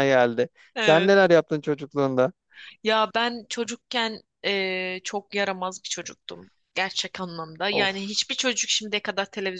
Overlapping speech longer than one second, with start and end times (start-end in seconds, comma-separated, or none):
none